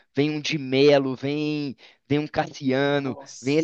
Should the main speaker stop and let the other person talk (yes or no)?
no